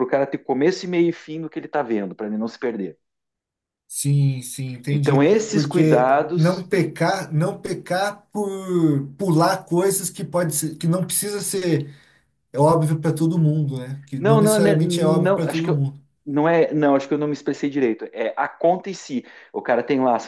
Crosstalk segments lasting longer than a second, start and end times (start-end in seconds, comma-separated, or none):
4.9-6.7, 14.2-15.8